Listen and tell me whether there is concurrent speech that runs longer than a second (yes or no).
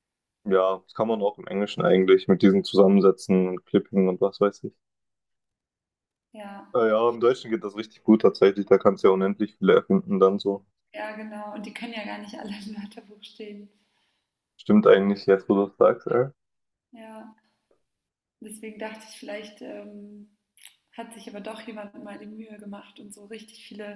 no